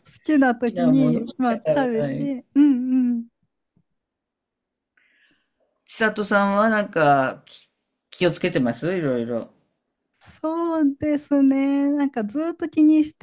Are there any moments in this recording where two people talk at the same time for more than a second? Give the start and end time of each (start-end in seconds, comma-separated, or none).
0.6-2.4